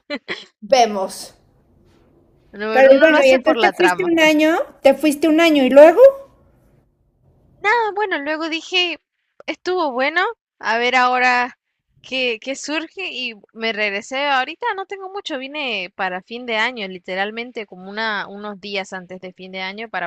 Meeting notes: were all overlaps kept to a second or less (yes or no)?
no